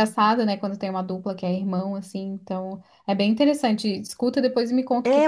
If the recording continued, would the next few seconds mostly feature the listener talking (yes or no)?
yes